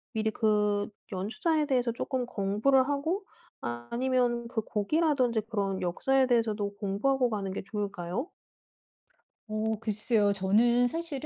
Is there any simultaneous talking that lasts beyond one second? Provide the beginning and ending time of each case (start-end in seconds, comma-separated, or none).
none